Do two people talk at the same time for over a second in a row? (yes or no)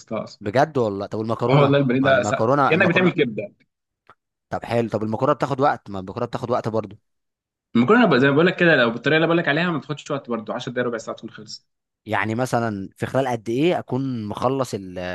yes